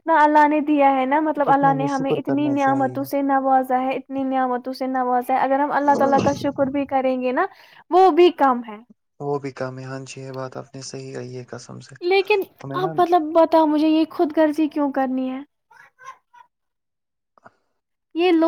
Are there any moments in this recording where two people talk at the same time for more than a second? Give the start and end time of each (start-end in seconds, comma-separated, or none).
1.5-3.1